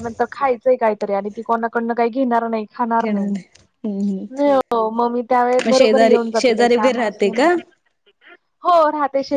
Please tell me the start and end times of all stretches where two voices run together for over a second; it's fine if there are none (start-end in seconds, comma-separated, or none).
5.7-7.5